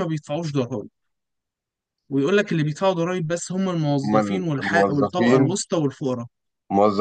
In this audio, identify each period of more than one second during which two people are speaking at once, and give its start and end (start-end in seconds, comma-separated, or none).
4.0-5.6